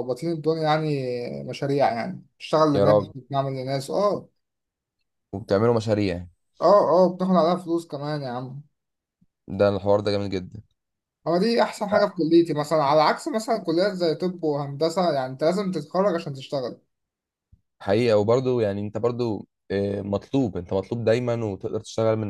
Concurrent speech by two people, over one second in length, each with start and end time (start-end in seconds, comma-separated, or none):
none